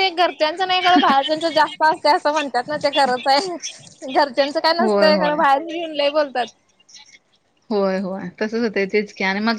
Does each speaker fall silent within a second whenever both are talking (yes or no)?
yes